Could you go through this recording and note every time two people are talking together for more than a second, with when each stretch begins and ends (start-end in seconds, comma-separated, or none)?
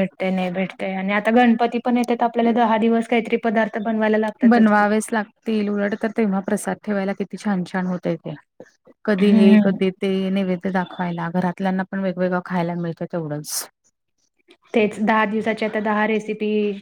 none